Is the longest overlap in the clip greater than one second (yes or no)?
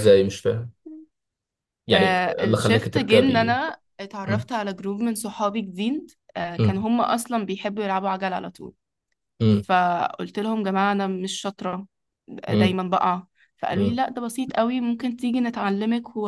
yes